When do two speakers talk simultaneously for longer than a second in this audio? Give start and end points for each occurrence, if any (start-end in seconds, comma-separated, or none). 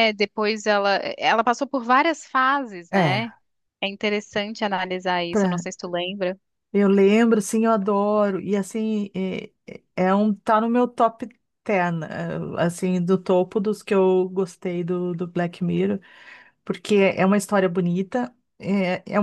none